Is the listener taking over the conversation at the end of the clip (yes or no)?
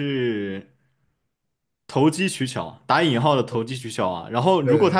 no